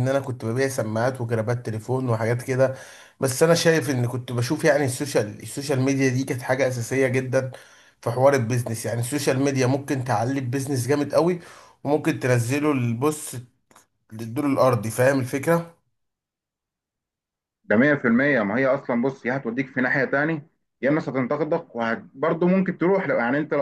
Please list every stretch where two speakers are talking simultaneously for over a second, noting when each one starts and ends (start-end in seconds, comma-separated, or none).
none